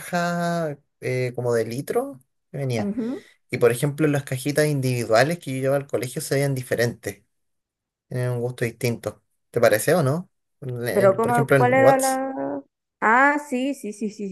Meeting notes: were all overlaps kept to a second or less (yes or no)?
no